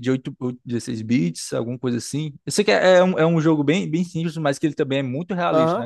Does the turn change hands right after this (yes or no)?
yes